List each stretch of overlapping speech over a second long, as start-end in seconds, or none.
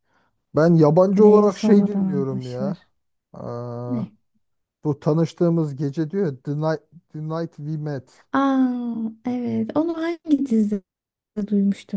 1.2-2.8